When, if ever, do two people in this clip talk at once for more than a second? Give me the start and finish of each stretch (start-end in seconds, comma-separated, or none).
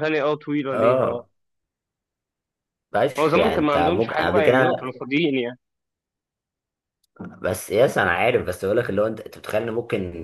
3.2-4.9